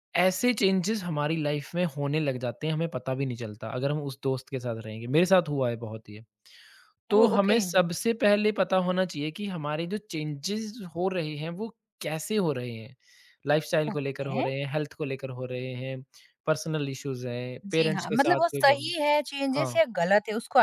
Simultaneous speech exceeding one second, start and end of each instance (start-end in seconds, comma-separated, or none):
17.6-18.9